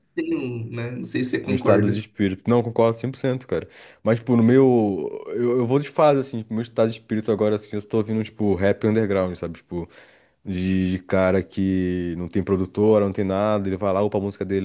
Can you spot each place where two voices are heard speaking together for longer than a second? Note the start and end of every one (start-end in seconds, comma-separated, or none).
none